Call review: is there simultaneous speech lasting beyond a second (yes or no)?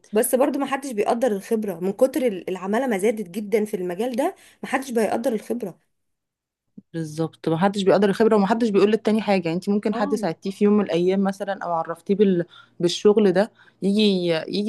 no